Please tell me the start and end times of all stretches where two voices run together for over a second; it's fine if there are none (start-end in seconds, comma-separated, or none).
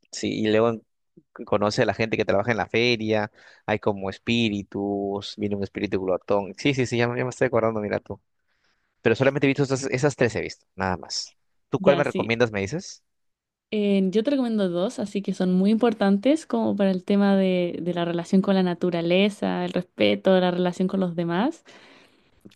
none